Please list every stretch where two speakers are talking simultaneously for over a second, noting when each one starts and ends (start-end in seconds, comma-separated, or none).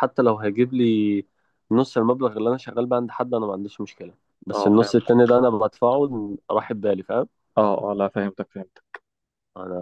none